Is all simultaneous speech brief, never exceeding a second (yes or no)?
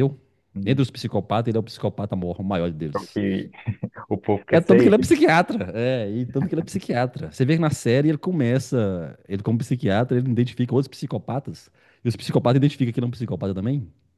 yes